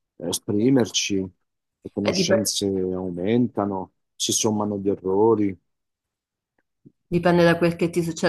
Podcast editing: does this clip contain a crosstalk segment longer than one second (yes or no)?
no